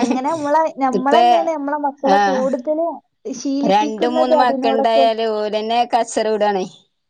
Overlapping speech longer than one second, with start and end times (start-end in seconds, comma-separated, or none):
3.7-5.1